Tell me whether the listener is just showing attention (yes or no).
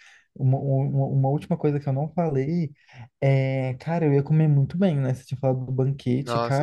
yes